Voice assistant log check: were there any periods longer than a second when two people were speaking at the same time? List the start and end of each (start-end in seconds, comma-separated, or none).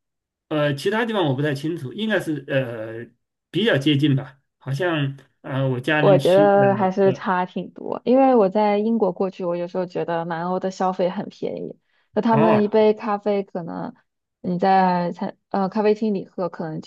6.0-7.3